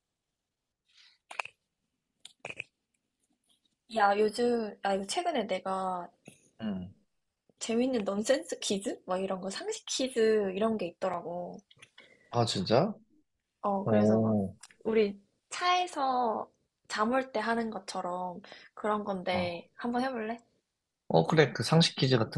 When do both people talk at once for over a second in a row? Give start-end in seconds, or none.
none